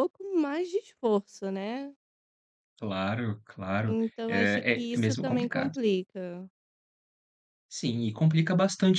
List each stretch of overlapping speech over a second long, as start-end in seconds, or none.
3.8-5.7